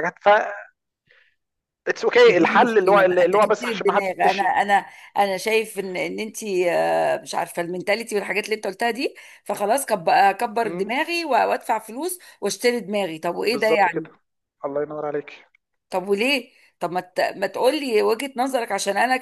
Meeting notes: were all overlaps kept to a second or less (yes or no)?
no